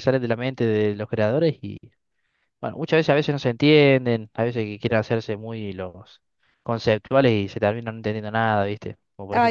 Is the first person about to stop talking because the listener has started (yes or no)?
yes